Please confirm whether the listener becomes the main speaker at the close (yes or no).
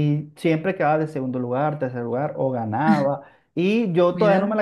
no